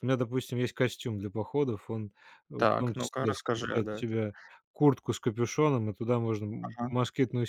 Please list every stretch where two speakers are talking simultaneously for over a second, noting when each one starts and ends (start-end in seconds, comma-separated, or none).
2.6-4.2